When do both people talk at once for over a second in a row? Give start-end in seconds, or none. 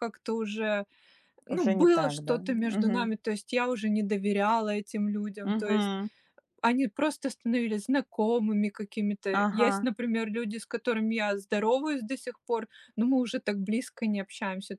1.5-3.2